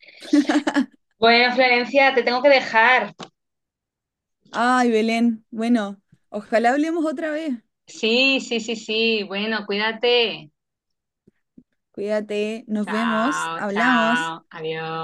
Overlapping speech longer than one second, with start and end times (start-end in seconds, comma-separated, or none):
12.8-14.3